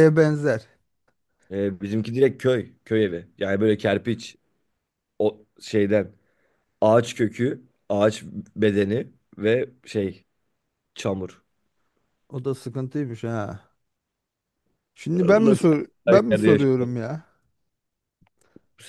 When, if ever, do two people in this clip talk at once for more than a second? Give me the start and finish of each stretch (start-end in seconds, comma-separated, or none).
15.4-16.9